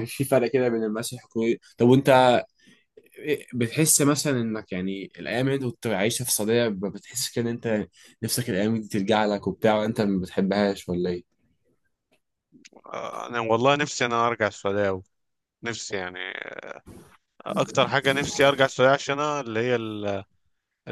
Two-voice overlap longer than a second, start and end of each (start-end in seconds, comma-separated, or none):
none